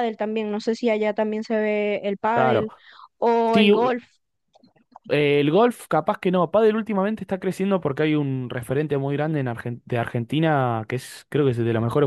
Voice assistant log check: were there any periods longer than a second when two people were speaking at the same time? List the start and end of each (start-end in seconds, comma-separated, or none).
none